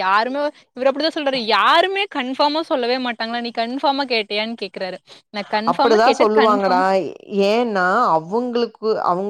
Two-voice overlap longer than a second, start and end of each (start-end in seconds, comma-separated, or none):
none